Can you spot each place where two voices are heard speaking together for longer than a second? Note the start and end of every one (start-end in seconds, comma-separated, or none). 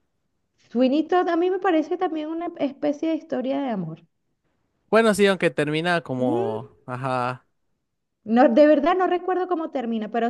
none